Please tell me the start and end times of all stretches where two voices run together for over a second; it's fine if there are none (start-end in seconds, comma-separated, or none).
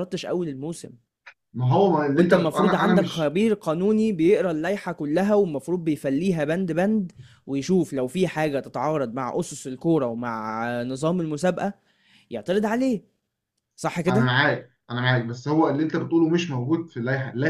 2.1-3.4